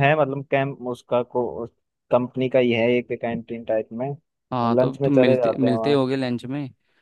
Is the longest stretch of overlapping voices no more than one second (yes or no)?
no